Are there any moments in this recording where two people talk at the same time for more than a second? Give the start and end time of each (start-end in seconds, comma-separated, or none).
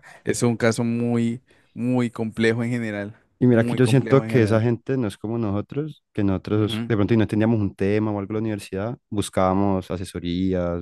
3.4-4.7